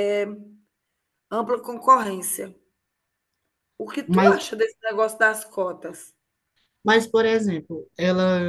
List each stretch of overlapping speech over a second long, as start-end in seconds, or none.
none